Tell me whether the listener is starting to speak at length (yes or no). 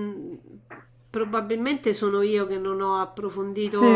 yes